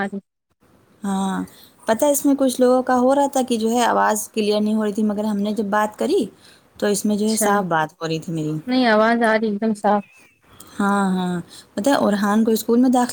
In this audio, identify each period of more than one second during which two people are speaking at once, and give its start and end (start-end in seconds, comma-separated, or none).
none